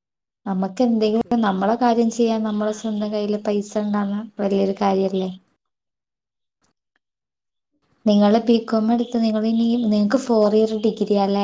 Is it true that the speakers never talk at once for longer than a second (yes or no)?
no